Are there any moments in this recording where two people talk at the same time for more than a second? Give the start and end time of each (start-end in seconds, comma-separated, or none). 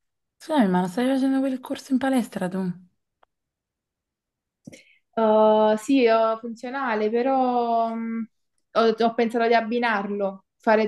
none